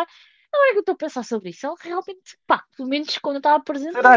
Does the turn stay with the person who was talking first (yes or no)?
no